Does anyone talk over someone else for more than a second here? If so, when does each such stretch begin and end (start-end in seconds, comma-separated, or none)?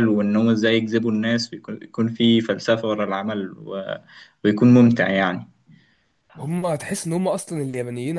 none